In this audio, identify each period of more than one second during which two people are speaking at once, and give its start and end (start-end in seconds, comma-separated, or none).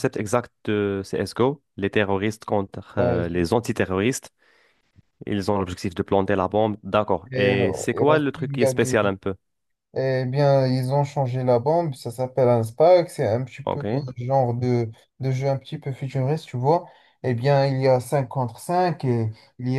7.3-9.0